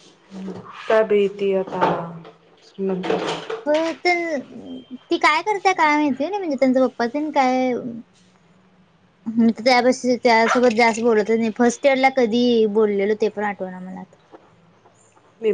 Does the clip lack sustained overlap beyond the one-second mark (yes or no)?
yes